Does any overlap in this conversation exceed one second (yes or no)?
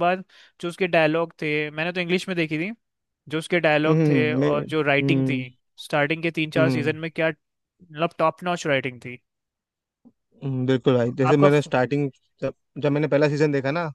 yes